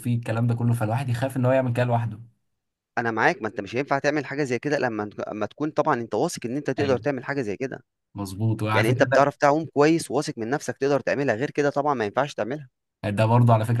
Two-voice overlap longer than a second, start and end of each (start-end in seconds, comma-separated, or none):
none